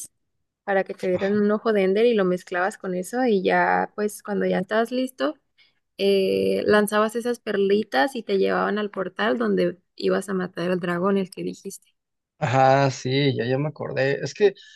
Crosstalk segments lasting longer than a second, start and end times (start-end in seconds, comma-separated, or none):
none